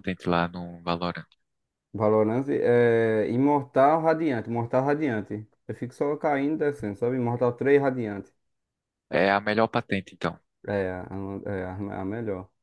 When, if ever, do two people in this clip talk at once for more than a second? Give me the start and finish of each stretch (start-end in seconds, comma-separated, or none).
none